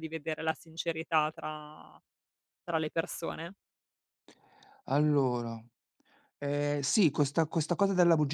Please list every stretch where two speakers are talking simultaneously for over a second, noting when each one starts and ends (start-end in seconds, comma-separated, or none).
none